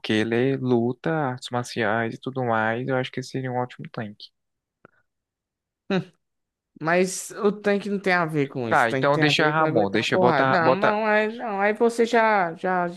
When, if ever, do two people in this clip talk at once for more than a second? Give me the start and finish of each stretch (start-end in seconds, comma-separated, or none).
8.7-11.0